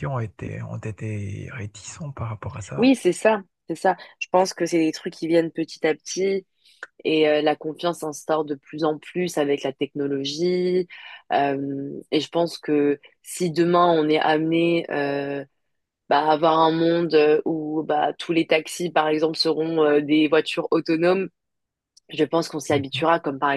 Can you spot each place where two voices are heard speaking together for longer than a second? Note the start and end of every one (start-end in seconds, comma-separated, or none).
none